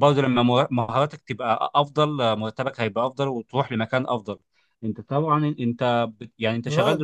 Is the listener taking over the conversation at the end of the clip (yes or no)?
no